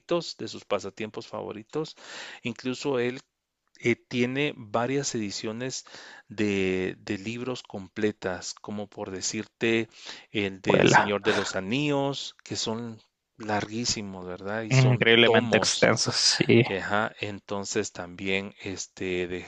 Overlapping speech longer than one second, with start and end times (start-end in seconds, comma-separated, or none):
14.7-15.9